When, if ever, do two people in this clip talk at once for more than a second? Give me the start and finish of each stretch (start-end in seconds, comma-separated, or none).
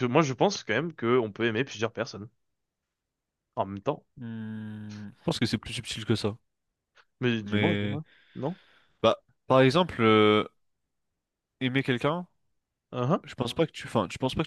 none